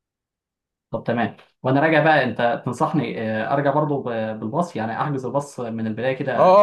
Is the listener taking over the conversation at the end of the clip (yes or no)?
yes